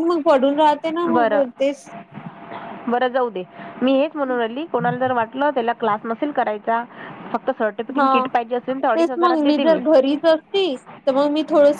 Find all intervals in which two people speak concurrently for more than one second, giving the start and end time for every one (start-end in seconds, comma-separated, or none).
none